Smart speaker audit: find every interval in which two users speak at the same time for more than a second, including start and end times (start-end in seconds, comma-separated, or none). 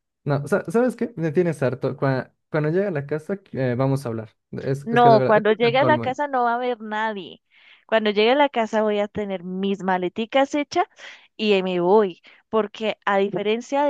4.8-6.1